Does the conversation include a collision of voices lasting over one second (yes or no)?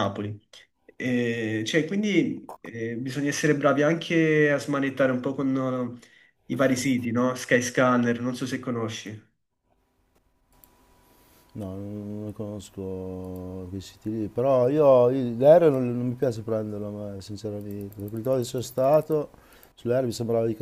no